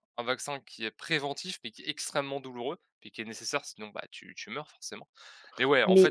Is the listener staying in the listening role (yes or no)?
yes